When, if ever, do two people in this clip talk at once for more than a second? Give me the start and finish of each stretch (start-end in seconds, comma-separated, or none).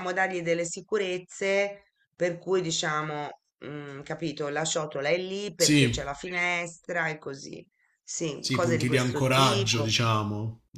8.4-9.9